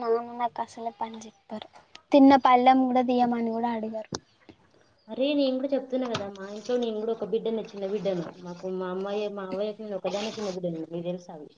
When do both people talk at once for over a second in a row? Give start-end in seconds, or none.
none